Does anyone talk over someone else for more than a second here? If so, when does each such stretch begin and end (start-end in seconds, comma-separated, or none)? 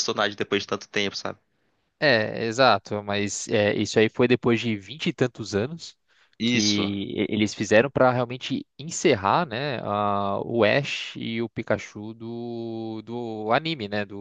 none